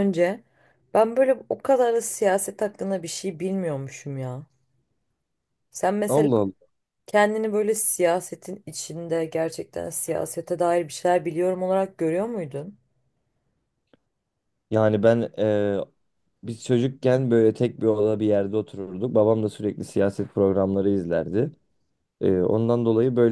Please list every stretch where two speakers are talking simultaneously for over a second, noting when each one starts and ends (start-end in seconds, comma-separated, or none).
none